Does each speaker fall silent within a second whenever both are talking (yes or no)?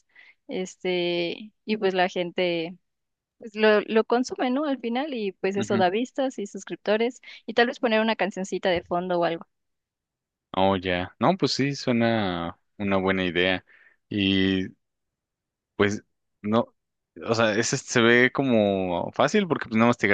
yes